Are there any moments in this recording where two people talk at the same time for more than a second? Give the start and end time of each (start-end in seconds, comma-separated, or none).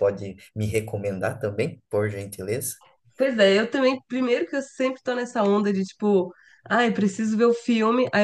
none